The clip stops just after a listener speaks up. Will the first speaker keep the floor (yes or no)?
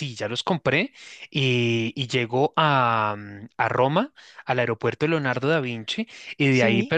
yes